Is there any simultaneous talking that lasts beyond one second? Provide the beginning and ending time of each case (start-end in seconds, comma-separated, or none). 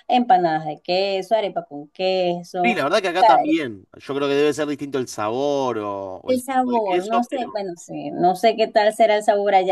6.3-7.6